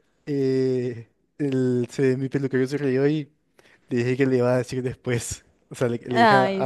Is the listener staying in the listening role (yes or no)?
yes